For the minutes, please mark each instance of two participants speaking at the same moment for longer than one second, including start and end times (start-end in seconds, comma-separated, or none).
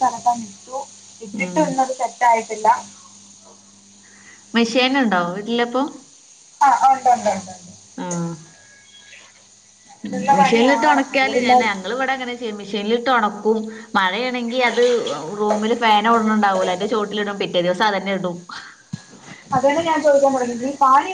10.1-11.8